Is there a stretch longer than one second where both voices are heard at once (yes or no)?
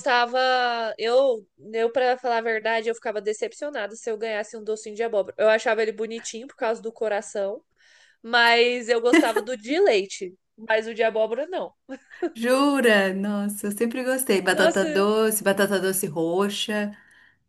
no